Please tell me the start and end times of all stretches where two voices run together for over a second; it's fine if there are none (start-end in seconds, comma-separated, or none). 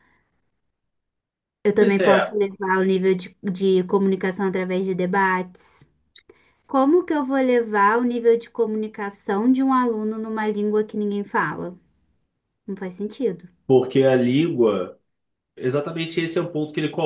none